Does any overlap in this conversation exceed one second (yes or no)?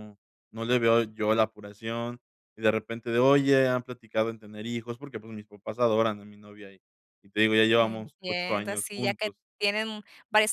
yes